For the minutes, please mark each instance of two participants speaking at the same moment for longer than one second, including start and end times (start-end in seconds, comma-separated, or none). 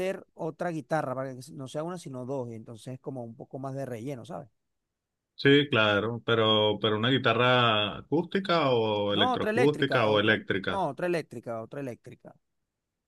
9.1-10.9